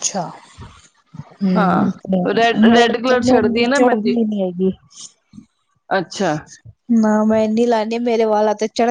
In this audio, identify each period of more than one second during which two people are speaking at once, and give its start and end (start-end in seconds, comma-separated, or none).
2.6-4.2